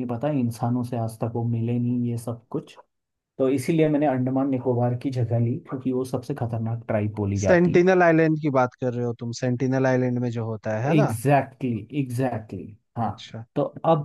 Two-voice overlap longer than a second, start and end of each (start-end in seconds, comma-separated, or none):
none